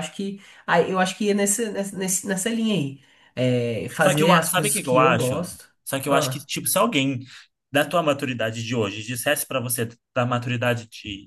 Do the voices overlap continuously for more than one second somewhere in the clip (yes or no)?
yes